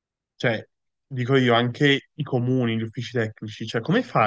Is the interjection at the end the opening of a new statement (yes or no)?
no